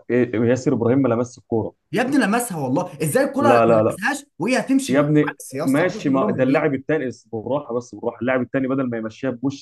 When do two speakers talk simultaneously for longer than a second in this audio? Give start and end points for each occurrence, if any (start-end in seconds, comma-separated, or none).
4.9-6.7